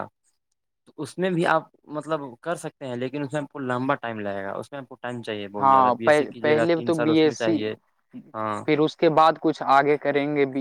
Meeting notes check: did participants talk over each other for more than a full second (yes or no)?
yes